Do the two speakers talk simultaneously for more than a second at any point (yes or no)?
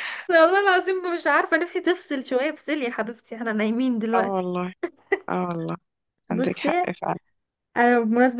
no